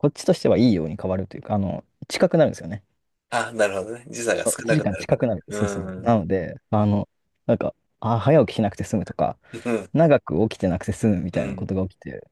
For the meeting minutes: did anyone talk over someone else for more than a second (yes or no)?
yes